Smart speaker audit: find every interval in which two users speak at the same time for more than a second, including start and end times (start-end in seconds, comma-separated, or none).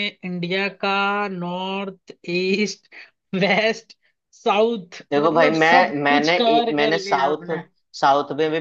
5.1-7.5